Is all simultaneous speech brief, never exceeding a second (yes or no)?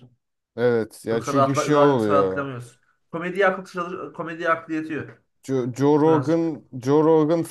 no